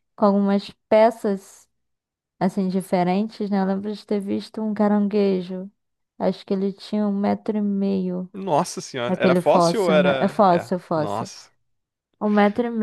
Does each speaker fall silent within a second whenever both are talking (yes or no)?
no